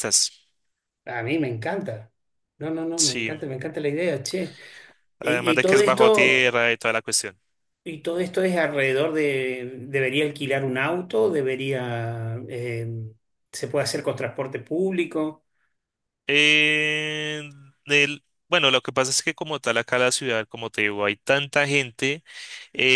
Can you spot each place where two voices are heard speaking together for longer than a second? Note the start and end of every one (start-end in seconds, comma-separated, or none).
5.2-6.6